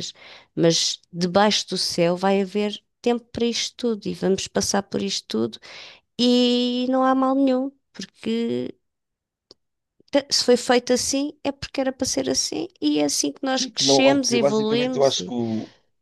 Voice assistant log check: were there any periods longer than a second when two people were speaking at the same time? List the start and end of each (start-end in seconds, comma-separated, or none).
13.5-15.3